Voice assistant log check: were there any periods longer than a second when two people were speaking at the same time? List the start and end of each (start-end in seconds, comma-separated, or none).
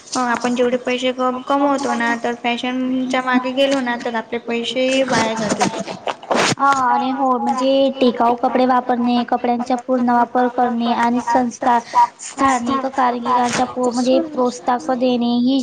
10.5-12.0